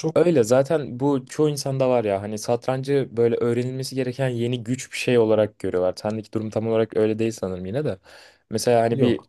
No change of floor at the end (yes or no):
yes